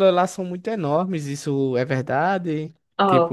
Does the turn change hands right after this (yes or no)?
yes